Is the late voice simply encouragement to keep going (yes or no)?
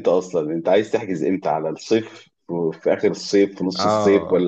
no